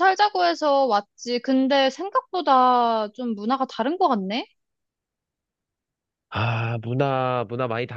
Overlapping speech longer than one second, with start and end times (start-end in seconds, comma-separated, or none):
none